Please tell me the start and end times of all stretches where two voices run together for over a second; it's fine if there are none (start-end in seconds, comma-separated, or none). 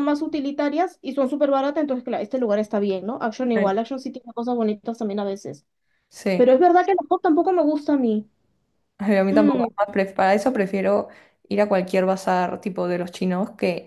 none